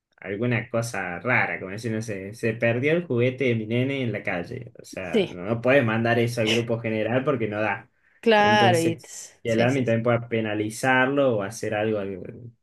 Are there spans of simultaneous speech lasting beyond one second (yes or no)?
yes